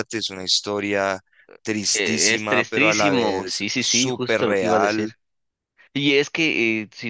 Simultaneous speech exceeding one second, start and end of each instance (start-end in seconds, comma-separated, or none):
1.9-5.1